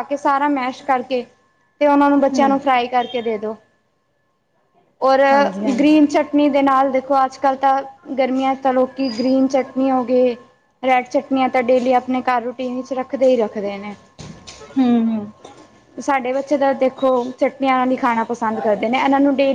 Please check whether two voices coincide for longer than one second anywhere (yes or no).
no